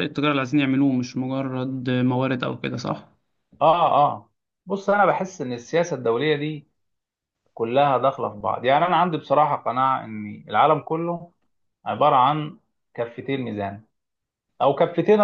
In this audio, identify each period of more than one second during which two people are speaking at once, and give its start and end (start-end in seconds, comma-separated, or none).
none